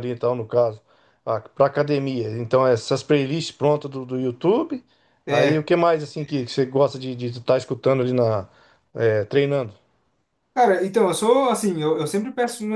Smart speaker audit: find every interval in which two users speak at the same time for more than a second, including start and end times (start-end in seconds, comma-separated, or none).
none